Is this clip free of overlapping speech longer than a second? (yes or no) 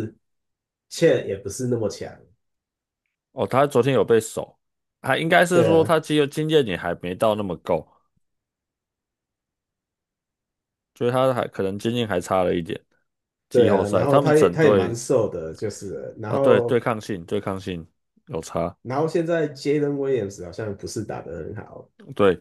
no